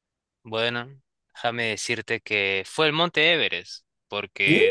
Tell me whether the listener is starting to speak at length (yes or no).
no